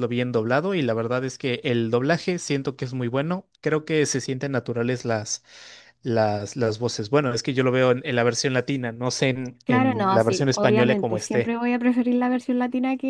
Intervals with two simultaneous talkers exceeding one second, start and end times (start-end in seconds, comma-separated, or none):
9.7-11.6